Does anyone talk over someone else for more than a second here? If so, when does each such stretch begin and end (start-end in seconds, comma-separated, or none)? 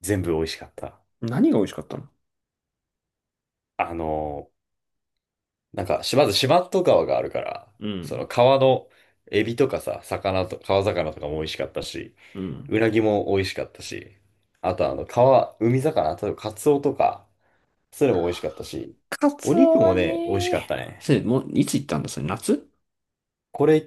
19.4-21.1